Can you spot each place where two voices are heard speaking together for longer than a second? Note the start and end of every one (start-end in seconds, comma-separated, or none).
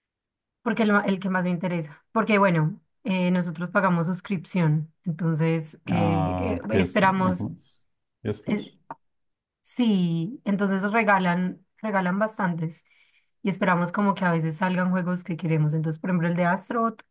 5.9-7.5